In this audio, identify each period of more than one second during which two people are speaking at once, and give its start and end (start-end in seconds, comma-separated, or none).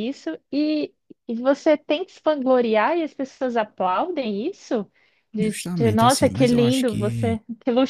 5.4-7.4